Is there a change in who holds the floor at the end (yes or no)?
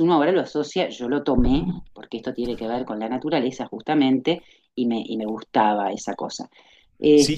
yes